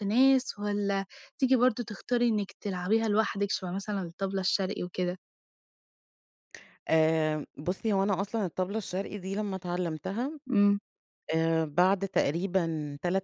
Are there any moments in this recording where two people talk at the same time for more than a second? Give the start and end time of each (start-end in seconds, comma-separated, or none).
none